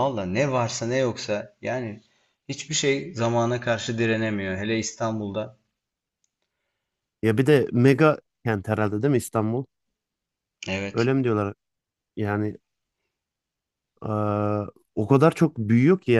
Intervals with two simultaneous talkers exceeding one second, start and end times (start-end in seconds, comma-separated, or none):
none